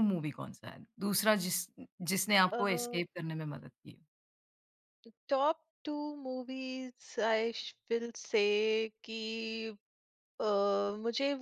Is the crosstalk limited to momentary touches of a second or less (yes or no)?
yes